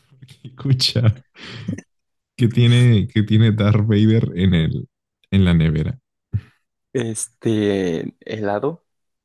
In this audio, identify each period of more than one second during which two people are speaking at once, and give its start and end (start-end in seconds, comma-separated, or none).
none